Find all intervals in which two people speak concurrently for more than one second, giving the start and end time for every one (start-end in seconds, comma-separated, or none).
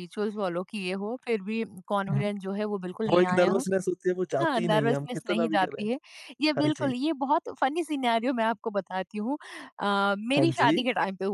4.4-5.8